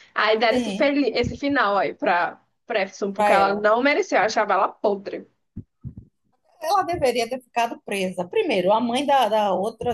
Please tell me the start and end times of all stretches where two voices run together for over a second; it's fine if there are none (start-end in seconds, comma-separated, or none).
none